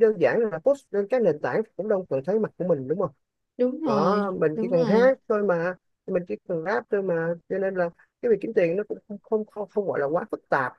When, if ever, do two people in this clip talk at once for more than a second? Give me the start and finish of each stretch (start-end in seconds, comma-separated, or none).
3.8-5.2